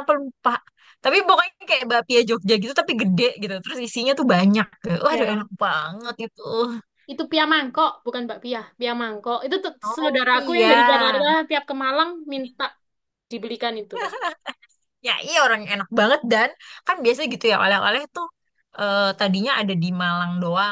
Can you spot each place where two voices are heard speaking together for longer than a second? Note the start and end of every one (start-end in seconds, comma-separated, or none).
9.8-11.2